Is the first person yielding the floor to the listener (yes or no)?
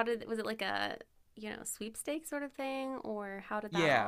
yes